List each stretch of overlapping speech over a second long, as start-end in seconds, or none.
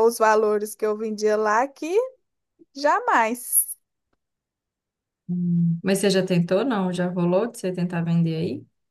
none